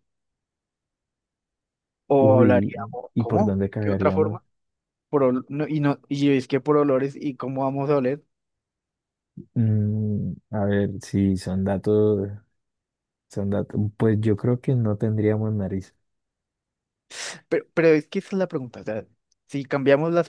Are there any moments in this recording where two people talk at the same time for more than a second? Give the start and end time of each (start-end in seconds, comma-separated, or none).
2.2-4.4